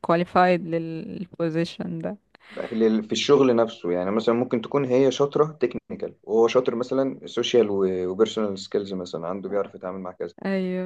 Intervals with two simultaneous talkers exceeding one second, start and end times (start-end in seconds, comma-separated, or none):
none